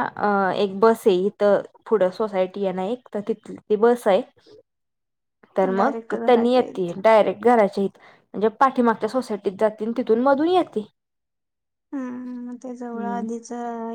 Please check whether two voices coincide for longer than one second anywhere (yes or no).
yes